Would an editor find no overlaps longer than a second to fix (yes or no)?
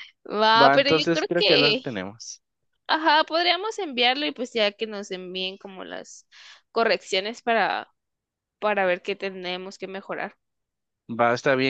no